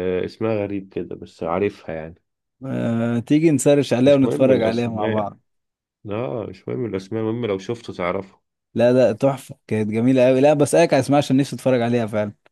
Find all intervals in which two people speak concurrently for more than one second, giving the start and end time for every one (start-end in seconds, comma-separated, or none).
4.0-5.3